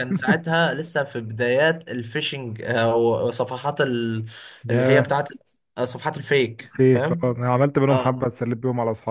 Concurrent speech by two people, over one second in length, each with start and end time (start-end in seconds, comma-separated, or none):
none